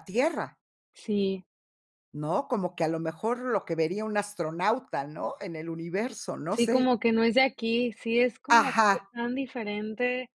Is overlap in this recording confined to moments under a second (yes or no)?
yes